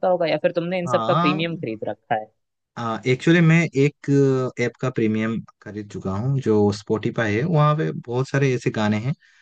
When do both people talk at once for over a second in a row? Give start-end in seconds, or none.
none